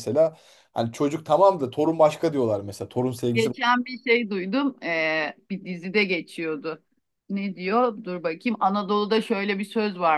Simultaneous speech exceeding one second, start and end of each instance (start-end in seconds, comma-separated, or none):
none